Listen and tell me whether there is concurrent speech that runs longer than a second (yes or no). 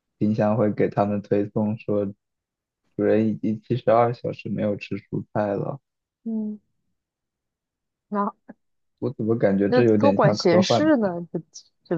yes